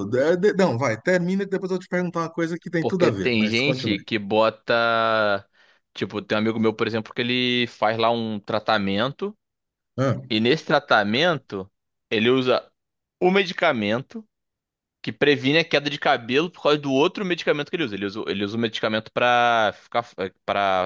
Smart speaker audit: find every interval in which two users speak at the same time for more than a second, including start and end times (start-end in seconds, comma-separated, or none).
2.8-4.0